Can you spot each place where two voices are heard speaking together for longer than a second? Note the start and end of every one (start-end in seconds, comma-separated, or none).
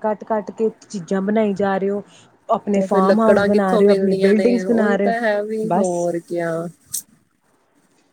2.7-5.9